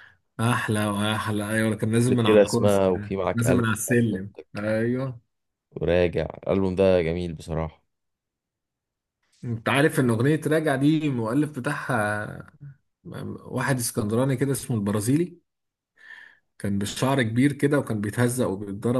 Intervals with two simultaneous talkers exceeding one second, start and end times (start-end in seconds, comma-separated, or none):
2.1-3.6